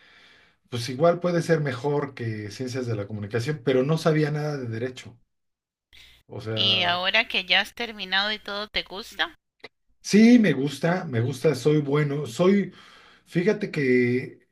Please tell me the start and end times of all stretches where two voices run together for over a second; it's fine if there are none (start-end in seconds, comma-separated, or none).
none